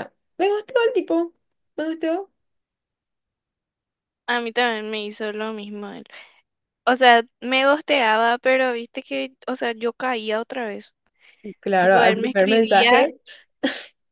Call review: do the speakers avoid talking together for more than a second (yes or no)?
no